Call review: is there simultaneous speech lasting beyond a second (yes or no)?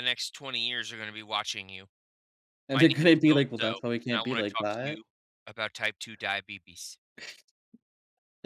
yes